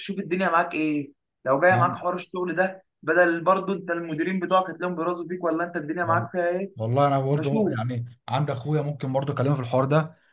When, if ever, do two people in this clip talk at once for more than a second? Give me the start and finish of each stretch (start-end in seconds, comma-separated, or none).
none